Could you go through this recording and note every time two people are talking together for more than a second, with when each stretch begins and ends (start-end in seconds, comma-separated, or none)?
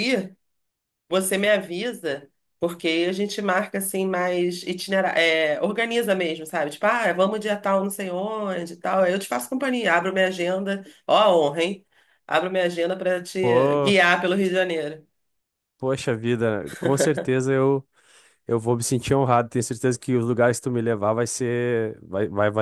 none